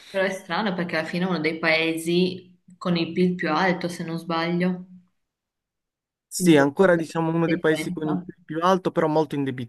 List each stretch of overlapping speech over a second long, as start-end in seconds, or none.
6.3-8.3